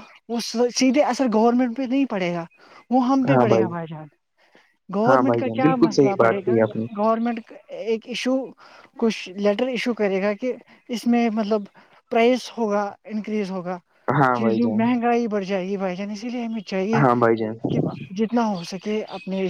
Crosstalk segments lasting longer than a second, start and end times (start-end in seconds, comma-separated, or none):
5.0-6.5